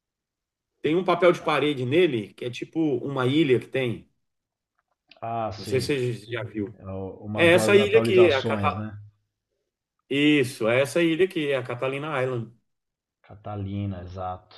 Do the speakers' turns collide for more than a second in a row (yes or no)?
yes